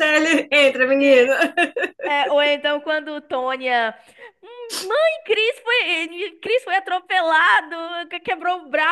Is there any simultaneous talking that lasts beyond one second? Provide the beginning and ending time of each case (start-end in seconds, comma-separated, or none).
none